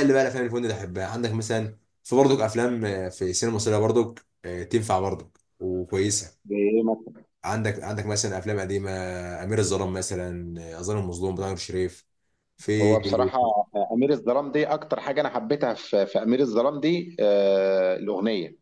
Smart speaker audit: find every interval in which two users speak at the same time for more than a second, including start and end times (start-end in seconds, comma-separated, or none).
none